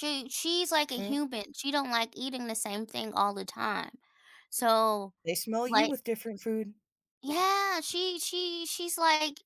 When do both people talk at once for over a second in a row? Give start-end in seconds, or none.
none